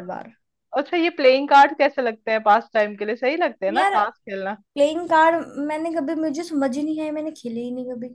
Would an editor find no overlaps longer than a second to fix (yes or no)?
yes